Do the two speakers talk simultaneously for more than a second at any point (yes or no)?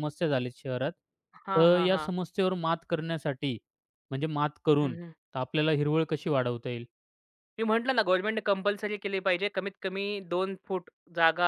no